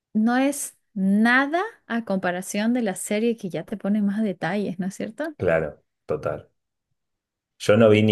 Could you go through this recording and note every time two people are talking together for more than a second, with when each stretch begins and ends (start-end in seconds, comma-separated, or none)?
none